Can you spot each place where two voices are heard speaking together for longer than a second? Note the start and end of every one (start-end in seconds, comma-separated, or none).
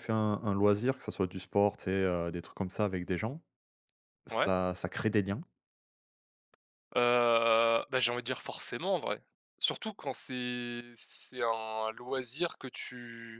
none